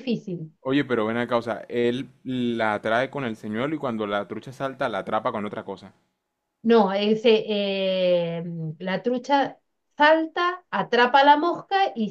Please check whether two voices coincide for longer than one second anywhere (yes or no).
no